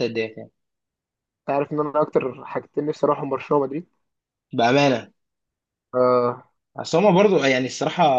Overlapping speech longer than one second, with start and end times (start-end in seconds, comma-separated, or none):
none